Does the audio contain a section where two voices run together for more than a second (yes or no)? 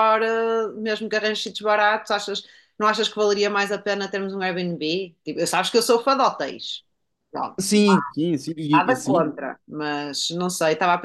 no